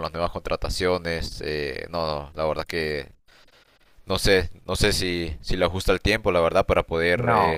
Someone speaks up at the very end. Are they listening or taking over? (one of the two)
taking over